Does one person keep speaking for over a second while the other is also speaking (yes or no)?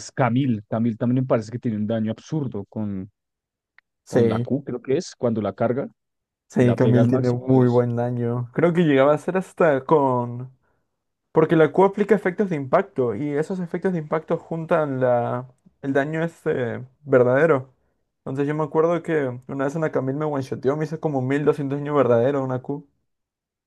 yes